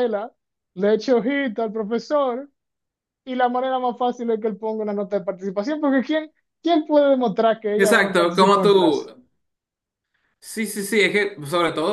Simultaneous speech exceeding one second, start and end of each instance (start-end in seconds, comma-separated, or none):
7.8-9.1